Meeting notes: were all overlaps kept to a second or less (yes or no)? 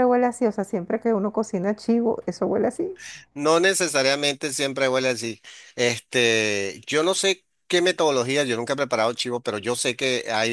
yes